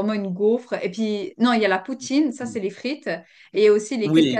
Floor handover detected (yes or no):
yes